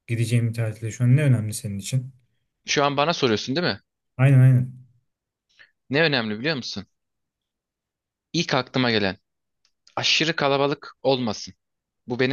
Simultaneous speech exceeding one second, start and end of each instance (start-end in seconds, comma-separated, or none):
none